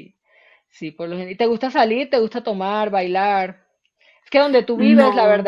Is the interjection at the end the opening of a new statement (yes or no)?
no